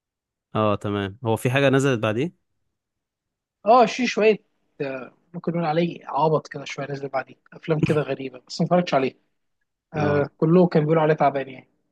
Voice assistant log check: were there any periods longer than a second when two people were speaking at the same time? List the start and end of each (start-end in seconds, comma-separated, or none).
none